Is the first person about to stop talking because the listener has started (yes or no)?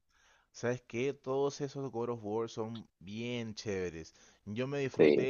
no